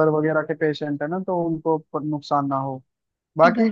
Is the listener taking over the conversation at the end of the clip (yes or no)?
no